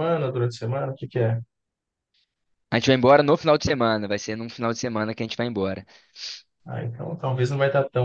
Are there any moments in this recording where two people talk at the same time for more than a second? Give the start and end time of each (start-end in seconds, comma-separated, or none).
none